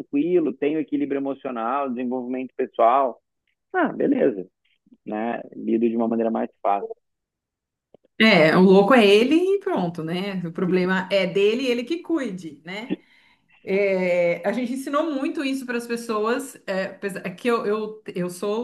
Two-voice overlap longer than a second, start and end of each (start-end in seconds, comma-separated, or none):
none